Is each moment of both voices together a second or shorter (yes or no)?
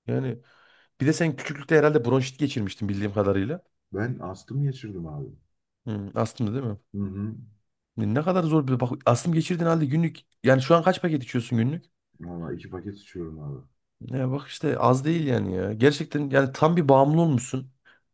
yes